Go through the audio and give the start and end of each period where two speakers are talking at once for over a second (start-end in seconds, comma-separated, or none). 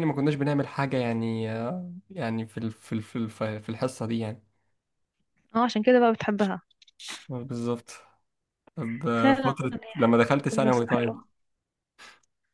9.2-11.2